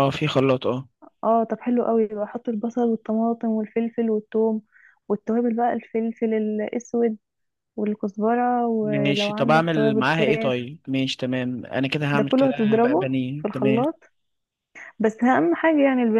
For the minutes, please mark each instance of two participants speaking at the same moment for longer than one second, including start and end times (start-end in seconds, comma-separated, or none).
8.8-10.5, 12.1-13.8